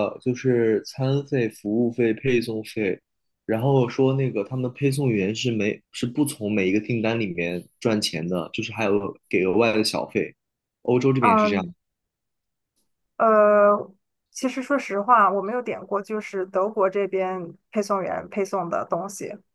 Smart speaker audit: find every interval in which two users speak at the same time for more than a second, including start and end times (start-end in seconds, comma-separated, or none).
none